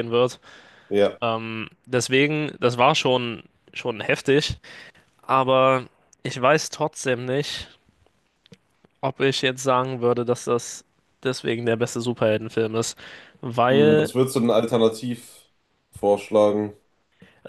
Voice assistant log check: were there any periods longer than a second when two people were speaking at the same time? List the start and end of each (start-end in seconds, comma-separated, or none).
none